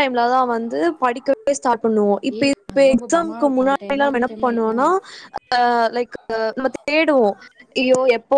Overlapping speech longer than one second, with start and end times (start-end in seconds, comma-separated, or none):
2.4-4.8